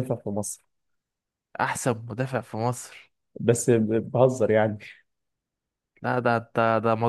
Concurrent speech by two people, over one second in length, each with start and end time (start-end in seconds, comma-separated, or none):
none